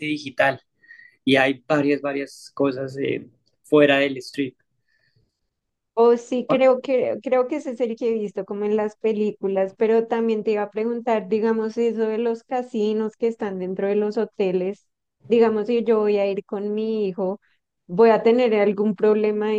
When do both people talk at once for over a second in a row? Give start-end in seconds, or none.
none